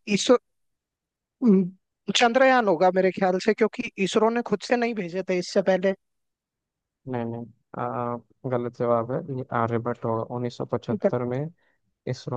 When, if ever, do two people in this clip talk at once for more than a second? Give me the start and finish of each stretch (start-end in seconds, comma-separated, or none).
none